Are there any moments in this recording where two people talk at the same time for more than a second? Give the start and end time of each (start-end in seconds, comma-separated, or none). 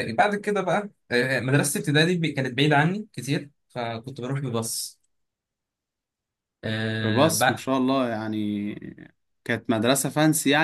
none